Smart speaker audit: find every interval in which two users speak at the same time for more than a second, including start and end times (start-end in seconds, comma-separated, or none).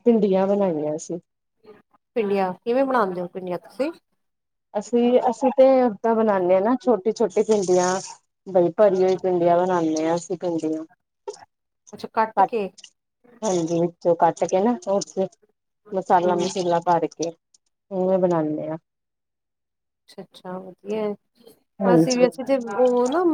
none